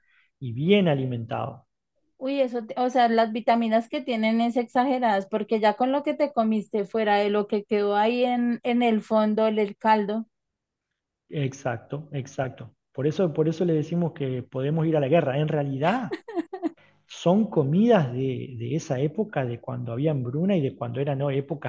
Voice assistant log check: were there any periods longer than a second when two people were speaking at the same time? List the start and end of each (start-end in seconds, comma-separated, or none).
none